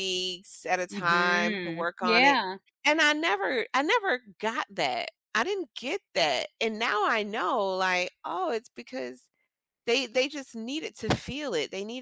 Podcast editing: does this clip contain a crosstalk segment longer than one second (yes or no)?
yes